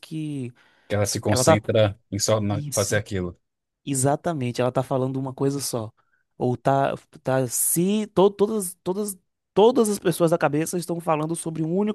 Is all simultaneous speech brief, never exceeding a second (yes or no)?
yes